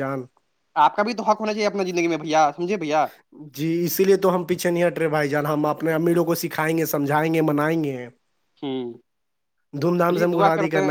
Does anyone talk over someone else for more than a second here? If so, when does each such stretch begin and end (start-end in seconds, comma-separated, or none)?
none